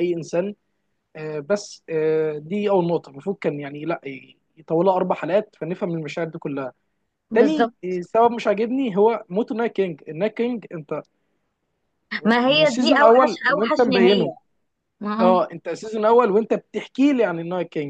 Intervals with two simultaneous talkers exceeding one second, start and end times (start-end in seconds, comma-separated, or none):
12.5-14.3